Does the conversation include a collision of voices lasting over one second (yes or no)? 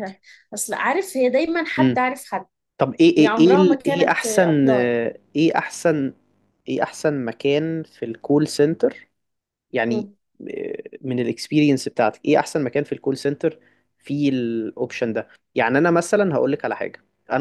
yes